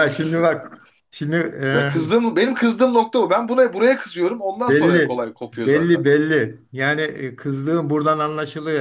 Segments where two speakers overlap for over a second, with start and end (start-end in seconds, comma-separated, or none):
4.7-6.0